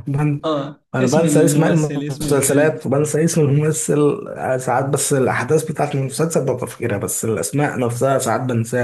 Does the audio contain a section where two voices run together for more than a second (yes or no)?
yes